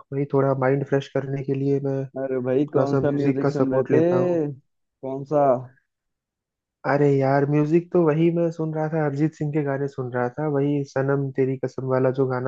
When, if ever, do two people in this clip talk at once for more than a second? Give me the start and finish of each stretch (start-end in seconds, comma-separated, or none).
2.4-4.0